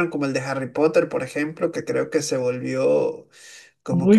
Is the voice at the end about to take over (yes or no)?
yes